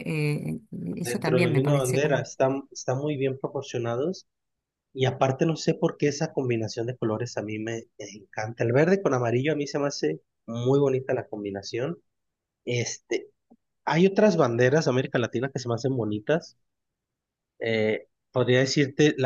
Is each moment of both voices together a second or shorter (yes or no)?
no